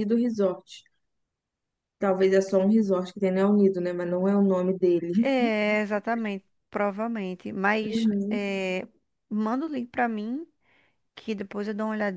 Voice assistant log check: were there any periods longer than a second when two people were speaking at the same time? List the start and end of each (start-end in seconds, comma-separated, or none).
none